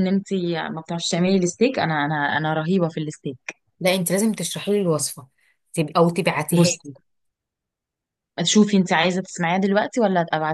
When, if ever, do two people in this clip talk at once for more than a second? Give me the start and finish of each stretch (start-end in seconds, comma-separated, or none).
none